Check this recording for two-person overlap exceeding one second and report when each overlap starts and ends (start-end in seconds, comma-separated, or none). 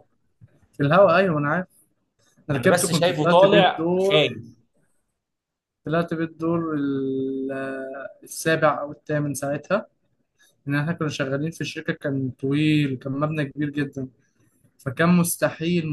2.5-4.2